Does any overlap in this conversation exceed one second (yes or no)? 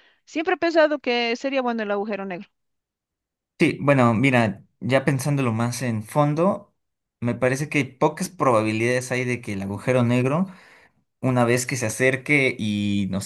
no